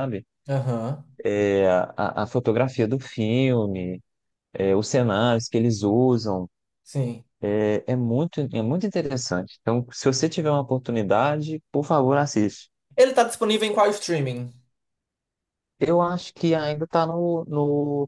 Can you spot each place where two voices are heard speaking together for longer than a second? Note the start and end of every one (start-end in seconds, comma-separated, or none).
none